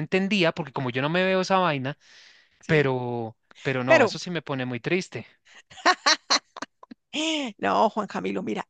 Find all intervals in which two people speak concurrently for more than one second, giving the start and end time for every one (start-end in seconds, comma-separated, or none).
none